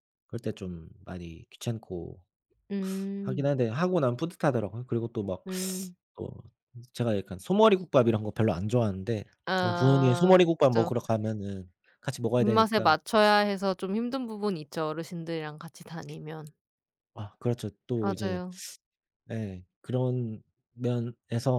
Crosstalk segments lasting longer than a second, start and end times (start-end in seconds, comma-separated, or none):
9.6-10.9